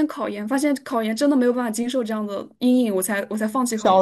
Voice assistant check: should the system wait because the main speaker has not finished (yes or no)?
no